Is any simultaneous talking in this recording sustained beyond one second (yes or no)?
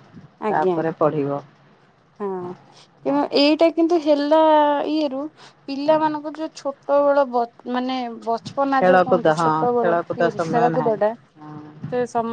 yes